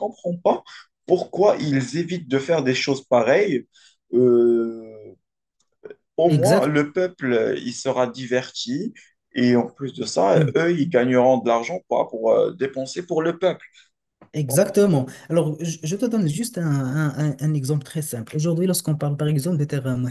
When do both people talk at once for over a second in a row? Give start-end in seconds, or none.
none